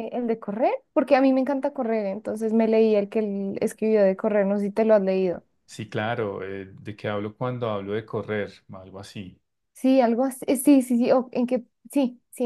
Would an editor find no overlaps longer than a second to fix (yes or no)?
yes